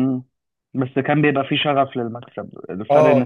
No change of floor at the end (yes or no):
yes